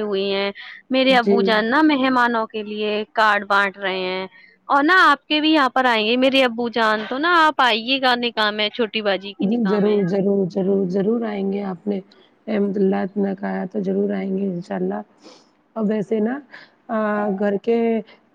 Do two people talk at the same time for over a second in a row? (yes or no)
no